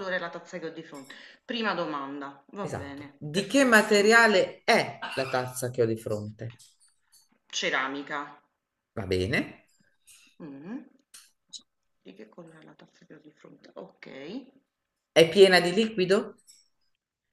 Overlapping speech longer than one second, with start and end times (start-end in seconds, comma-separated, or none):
2.6-4.2